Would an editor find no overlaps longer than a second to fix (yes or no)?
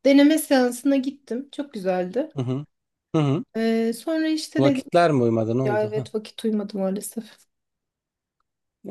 yes